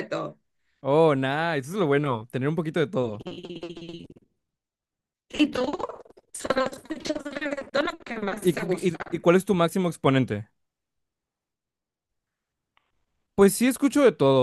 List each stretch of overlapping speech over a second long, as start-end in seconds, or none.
none